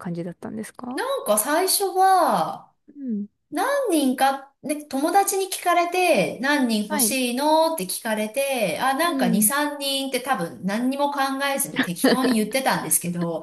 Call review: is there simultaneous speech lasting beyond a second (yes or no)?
no